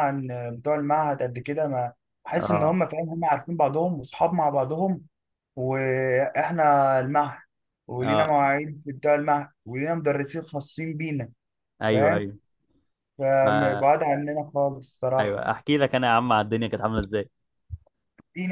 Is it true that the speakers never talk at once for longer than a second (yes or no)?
yes